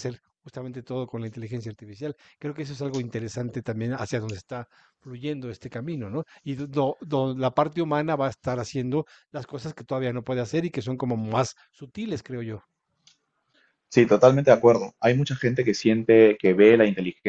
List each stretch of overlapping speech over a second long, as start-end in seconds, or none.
none